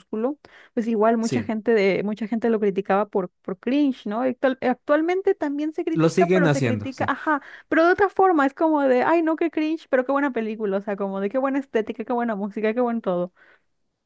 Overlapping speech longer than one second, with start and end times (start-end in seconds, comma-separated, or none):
5.9-7.1